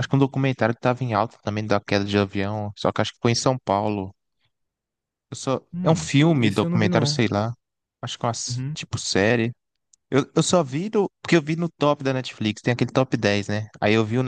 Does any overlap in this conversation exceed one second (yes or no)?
yes